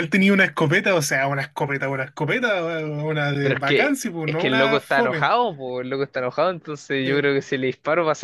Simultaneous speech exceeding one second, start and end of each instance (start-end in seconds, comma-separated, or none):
3.4-5.3